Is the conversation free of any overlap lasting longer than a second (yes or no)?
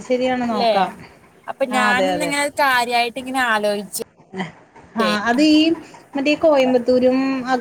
yes